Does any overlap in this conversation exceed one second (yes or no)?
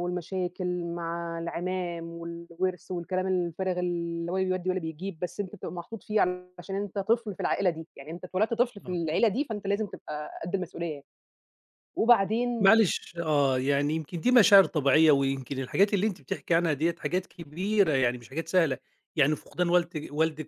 no